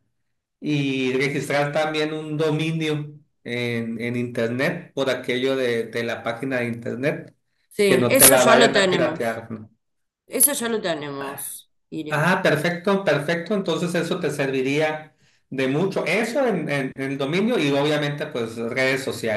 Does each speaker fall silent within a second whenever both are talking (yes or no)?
no